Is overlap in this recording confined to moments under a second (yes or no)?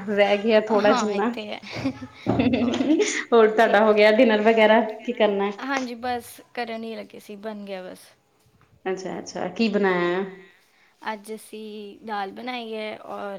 yes